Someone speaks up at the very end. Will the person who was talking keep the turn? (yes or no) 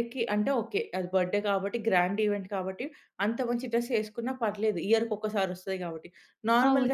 yes